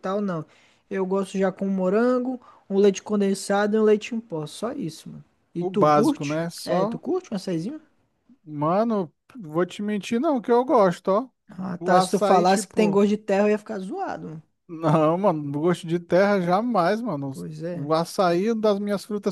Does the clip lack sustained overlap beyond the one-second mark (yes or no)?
no